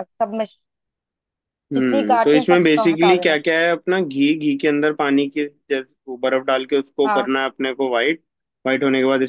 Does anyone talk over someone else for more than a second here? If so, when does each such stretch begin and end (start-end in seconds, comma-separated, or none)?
1.7-3.4